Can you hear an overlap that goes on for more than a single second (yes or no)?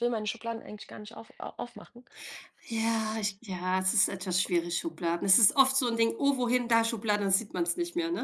no